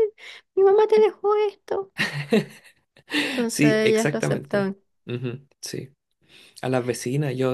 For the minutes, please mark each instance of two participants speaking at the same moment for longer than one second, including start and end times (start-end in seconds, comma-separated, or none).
3.5-4.7